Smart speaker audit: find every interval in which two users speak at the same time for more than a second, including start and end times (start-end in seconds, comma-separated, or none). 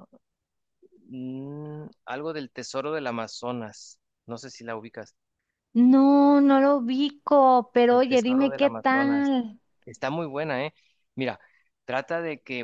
7.9-9.3